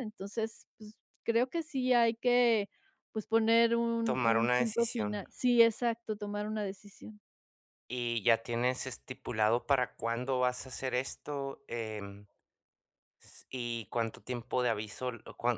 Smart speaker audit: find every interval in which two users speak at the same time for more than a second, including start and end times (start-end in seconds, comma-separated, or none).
4.0-5.2